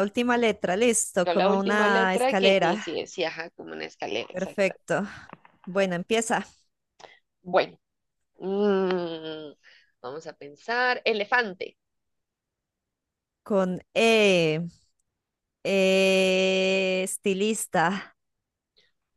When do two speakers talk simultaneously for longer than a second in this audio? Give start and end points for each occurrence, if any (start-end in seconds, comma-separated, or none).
1.2-2.9